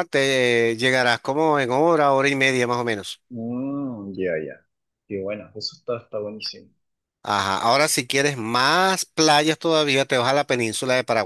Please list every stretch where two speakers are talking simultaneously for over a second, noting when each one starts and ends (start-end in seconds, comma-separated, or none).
none